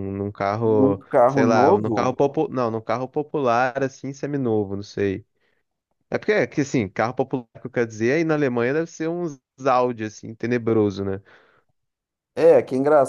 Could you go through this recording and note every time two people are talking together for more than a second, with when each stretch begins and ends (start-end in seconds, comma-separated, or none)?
0.6-2.2